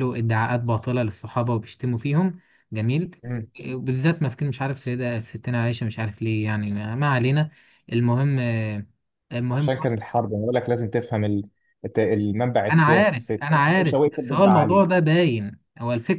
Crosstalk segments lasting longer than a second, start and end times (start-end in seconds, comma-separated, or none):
12.7-14.8